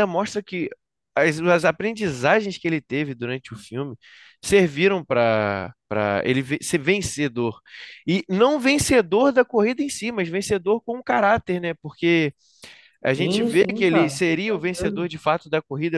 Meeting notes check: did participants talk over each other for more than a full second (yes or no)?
yes